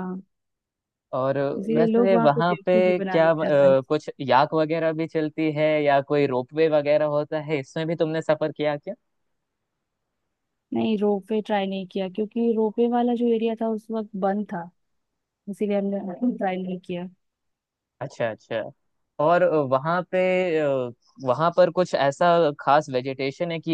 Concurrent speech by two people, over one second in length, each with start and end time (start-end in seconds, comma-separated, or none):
1.7-3.9